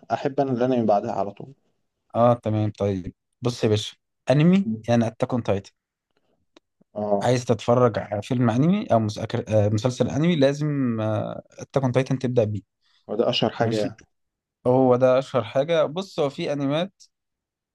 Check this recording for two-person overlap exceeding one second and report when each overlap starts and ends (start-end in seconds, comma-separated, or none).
none